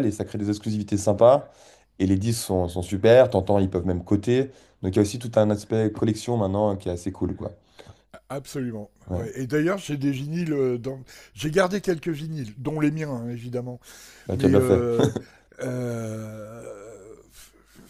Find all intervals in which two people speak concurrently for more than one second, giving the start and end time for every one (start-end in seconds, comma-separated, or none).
none